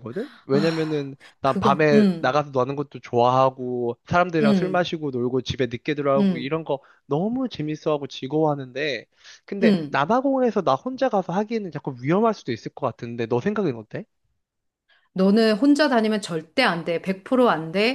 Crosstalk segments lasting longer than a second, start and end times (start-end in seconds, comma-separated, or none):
0.5-2.4